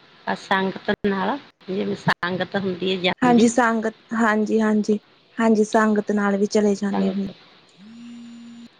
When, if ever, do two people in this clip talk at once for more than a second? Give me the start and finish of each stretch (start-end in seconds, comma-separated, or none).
none